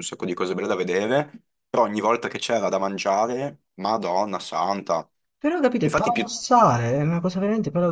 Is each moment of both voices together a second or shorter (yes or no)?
yes